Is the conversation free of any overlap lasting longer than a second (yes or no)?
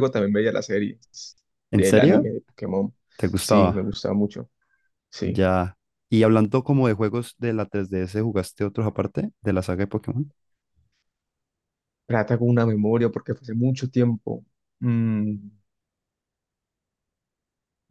yes